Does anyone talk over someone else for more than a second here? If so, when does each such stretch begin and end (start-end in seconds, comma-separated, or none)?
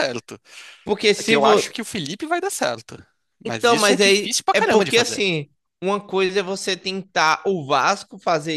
3.5-5.2